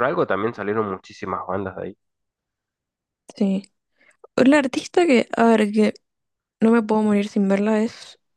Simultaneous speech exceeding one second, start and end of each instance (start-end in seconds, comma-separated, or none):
none